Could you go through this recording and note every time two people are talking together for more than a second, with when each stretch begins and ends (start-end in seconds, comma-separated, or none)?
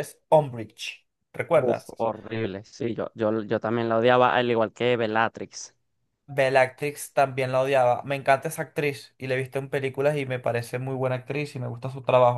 none